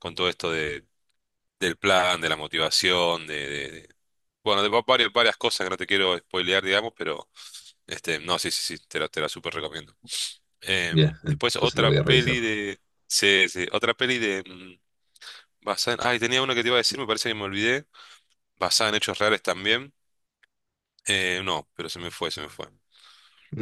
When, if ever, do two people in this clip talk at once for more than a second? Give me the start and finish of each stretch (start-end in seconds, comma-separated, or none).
10.9-12.4